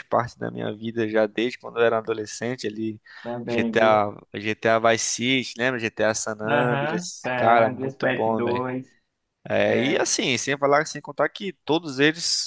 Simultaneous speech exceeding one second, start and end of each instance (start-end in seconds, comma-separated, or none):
6.5-8.6